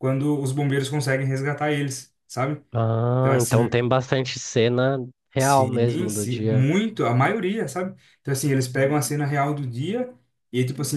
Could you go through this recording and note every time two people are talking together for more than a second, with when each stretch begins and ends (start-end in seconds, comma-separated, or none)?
5.4-6.7